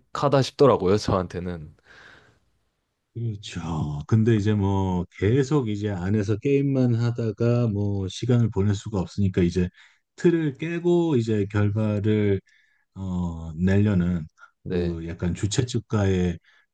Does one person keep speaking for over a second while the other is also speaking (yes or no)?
no